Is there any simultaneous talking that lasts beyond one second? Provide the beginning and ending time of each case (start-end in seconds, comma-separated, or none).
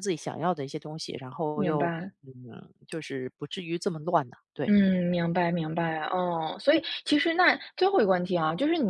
none